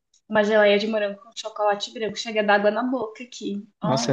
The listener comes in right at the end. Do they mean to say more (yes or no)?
yes